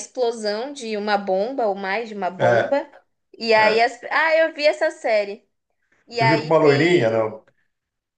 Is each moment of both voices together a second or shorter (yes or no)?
no